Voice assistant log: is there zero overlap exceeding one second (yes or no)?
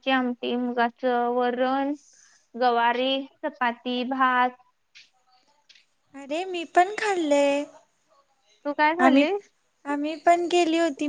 yes